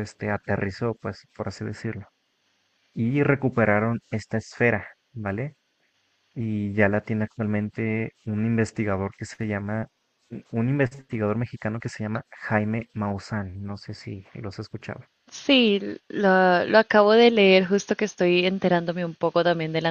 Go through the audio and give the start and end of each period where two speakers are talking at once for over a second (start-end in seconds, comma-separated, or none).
none